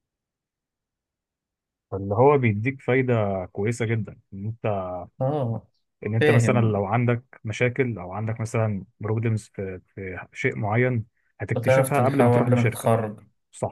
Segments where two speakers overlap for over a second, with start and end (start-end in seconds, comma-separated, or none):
11.5-12.9